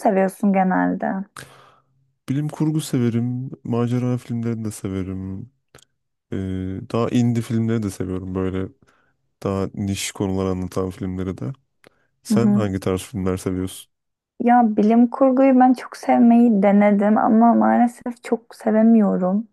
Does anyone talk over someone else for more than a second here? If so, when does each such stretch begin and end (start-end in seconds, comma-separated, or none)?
none